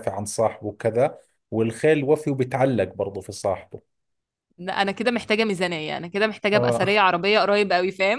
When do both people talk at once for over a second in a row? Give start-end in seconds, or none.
none